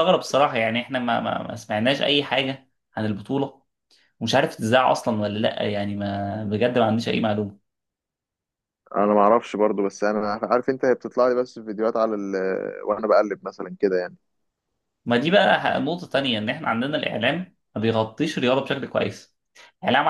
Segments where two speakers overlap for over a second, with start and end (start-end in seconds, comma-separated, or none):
none